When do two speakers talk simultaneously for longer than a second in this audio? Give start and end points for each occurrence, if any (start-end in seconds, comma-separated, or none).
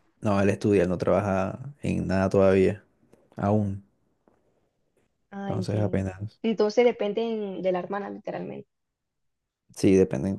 none